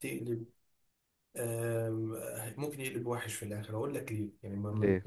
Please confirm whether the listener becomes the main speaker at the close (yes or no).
no